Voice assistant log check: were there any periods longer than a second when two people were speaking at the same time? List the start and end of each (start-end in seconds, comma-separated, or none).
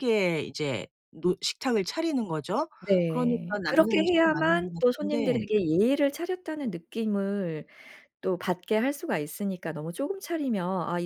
3.1-5.5